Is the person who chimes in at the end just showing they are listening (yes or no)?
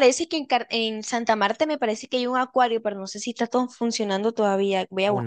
no